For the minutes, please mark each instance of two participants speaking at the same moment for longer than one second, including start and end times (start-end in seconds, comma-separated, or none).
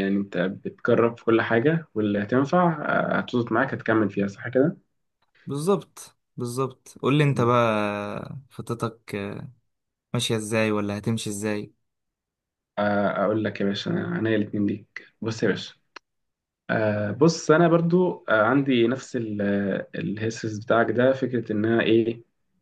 none